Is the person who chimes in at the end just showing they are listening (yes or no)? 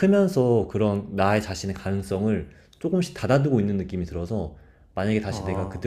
yes